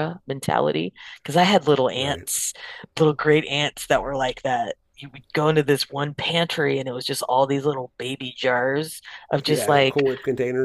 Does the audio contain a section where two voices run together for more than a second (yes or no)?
no